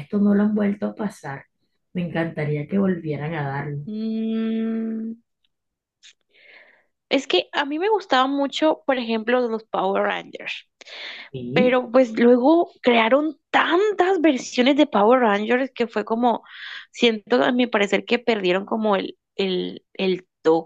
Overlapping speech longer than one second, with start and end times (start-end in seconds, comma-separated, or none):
none